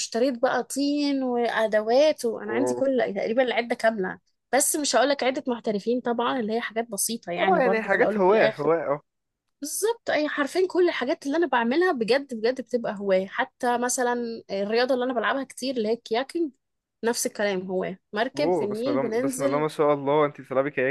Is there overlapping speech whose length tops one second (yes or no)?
yes